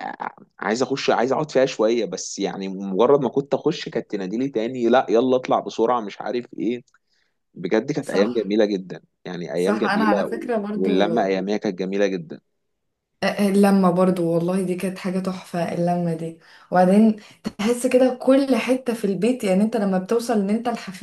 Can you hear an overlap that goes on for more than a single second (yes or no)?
yes